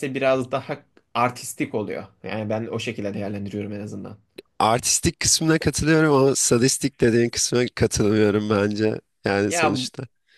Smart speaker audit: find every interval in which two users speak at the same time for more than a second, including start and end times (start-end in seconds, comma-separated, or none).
none